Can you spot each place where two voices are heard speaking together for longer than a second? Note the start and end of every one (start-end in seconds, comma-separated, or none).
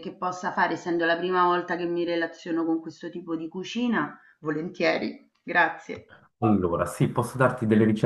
none